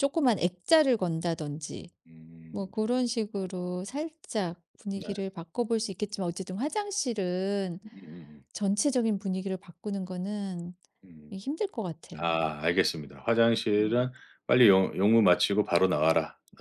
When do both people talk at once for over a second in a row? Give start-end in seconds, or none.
none